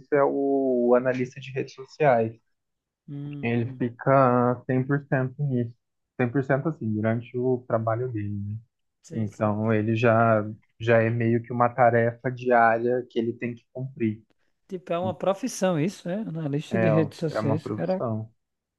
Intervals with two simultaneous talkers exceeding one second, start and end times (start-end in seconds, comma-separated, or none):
16.7-18.0